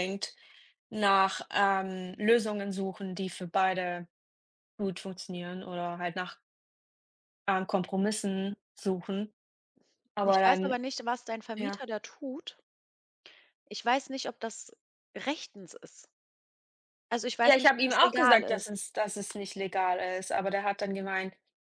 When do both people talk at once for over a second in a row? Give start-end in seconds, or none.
17.4-18.8